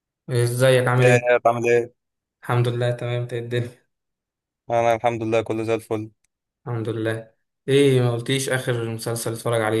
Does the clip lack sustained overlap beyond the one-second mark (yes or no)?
yes